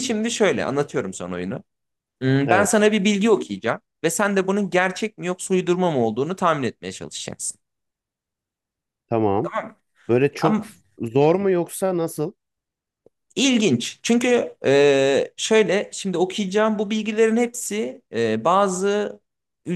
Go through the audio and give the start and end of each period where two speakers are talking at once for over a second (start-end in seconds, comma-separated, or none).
none